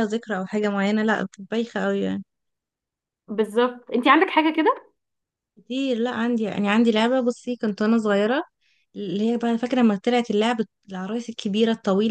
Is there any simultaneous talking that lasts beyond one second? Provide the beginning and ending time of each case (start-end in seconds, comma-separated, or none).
none